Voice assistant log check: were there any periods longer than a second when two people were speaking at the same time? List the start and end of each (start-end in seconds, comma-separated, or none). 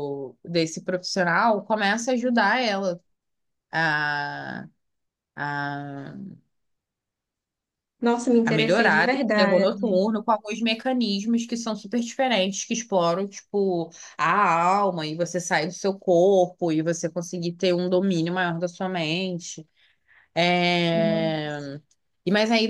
8.4-10.0